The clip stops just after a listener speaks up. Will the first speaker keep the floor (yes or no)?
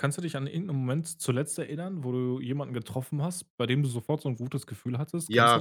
no